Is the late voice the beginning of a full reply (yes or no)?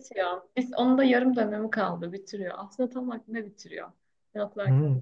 yes